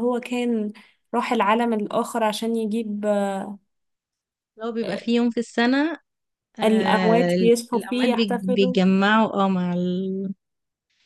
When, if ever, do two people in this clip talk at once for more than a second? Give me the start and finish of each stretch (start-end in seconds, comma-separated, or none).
6.6-8.8